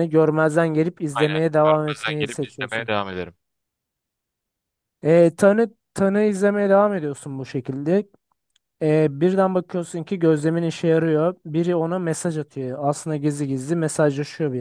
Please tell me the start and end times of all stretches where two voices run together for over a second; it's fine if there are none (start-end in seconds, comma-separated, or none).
1.1-2.9